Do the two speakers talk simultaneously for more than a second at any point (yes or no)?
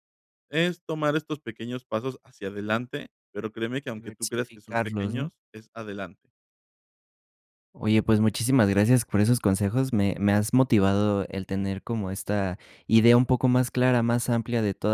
yes